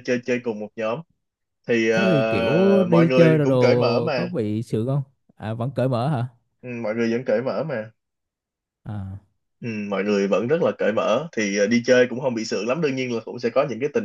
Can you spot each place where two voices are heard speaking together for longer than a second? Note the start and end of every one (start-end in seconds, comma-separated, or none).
1.9-4.3